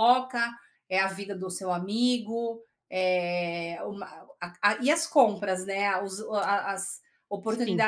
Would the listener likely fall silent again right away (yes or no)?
yes